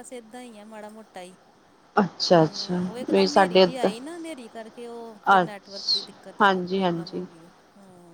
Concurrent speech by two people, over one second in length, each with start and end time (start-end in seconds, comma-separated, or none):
2.3-3.9, 5.4-7.2